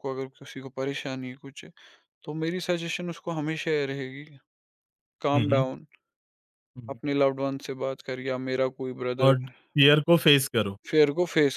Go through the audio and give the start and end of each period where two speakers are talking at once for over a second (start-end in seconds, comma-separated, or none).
none